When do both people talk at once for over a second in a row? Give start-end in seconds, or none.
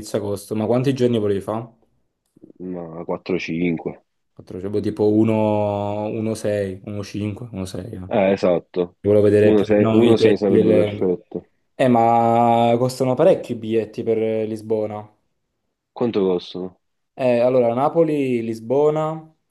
9.4-11.1